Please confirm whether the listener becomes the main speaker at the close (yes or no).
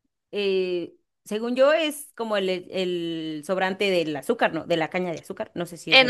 yes